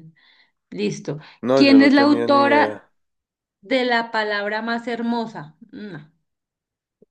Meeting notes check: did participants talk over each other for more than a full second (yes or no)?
yes